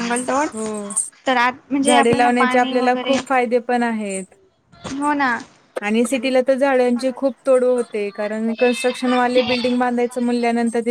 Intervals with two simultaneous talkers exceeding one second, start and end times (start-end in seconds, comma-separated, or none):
1.9-3.2